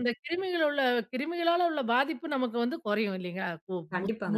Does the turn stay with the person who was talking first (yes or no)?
no